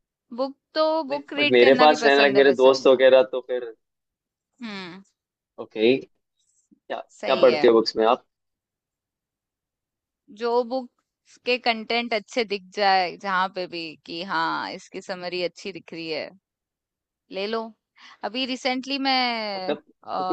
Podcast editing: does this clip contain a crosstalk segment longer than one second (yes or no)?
yes